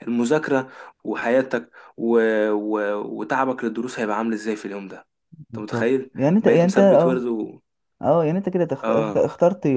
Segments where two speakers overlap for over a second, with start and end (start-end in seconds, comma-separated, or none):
5.5-7.3